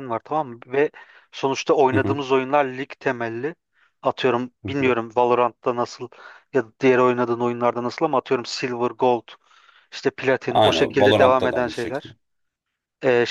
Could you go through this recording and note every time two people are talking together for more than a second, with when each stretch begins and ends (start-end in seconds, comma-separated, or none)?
10.5-12.1